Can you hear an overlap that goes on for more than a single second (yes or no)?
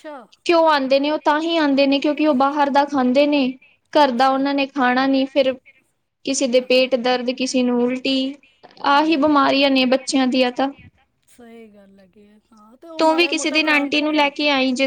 yes